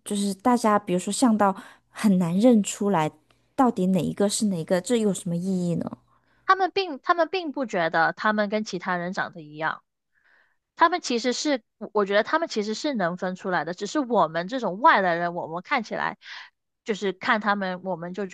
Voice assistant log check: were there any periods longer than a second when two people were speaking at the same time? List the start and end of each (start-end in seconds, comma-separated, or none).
none